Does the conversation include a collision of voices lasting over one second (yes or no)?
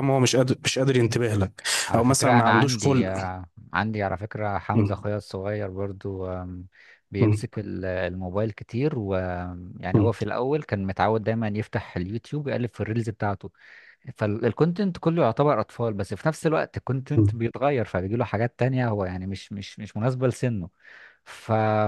yes